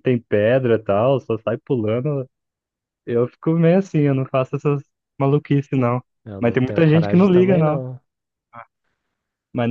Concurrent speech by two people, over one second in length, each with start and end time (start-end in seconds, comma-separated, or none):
6.4-7.8